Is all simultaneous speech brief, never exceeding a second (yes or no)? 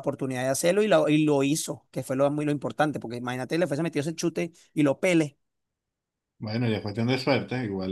yes